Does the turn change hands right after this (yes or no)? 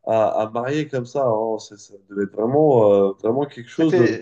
yes